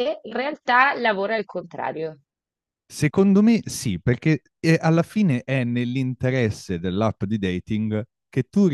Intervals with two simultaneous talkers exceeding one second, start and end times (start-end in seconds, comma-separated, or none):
none